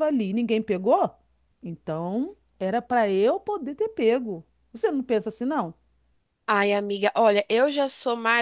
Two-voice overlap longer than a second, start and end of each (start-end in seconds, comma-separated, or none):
none